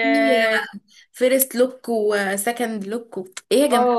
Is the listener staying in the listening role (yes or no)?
no